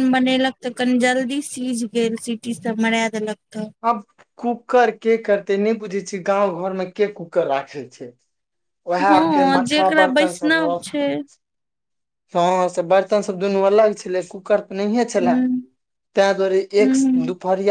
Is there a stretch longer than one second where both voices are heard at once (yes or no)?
yes